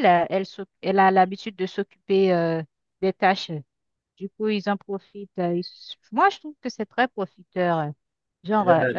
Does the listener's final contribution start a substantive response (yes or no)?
no